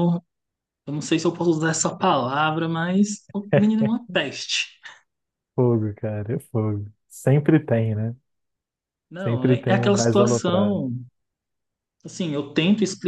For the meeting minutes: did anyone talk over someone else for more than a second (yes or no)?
yes